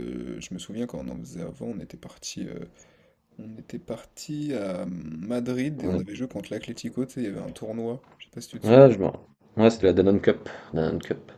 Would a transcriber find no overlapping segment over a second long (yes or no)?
yes